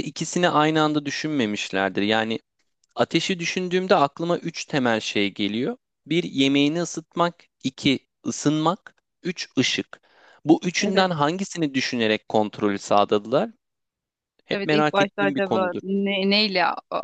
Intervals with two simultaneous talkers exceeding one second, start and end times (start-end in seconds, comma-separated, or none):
14.5-15.8